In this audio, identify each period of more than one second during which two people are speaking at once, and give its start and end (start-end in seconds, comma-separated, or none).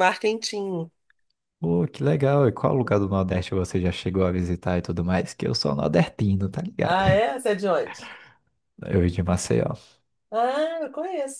none